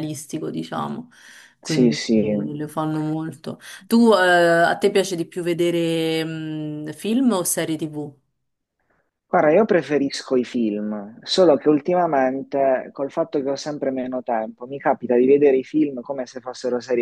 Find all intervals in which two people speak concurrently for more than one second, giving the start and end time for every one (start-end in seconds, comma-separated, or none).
none